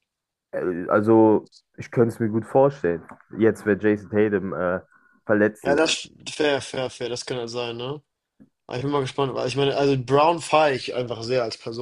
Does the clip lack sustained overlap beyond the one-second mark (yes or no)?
yes